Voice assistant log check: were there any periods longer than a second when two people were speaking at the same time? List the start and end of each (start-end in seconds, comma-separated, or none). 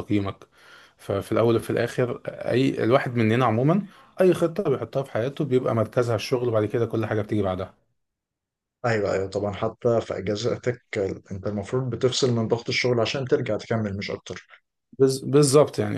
none